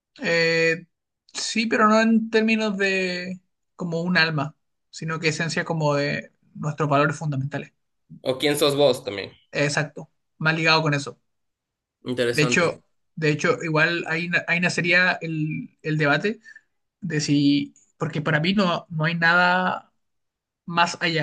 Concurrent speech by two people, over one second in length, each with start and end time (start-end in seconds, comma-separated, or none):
none